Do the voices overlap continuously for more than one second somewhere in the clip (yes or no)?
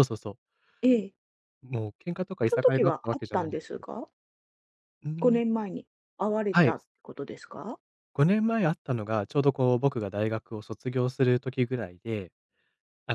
yes